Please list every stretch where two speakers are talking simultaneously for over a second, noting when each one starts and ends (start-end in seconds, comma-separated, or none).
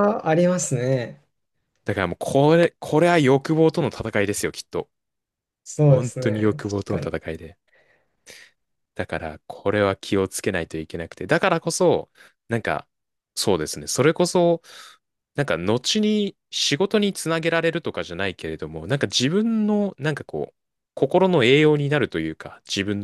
5.9-7.1